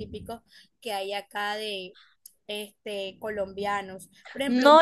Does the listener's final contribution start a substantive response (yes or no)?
no